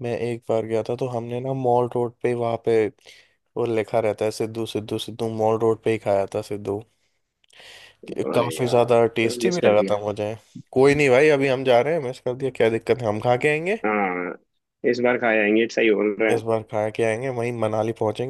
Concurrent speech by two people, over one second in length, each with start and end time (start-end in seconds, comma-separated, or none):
8.3-9.9